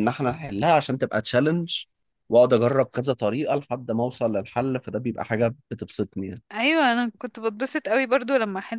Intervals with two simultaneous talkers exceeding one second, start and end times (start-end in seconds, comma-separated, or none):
none